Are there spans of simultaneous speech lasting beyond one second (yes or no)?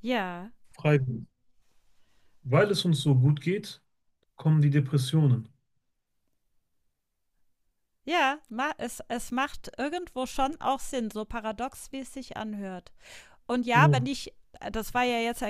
no